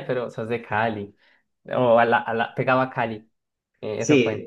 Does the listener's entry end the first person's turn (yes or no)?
yes